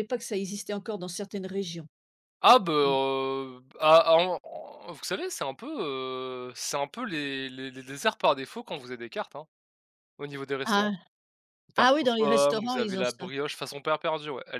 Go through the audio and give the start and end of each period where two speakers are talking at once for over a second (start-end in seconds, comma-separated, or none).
11.8-13.3